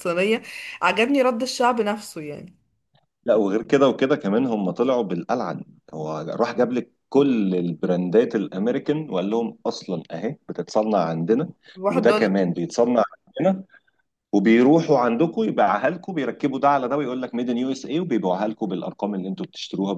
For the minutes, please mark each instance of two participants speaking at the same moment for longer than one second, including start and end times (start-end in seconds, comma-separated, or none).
none